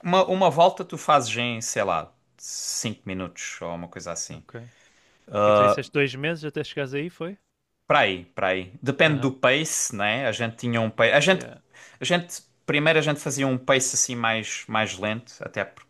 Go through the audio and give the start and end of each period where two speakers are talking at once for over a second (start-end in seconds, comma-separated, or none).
none